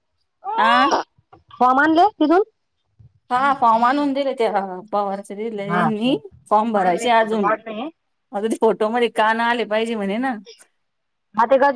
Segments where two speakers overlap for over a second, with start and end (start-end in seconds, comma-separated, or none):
5.7-7.5